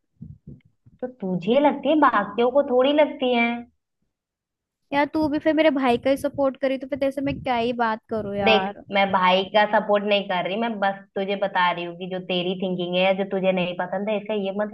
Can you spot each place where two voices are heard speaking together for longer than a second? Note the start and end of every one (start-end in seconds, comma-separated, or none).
none